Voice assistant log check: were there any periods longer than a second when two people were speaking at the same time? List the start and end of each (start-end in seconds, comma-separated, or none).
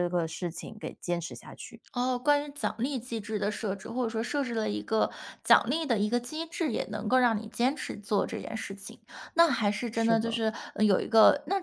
none